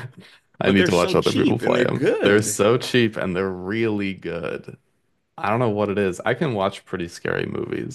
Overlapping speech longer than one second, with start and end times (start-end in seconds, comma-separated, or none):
0.7-2.6